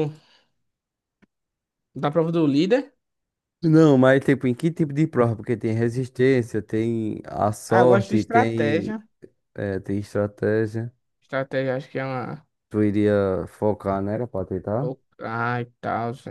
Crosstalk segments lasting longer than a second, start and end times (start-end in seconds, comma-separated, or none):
7.7-9.0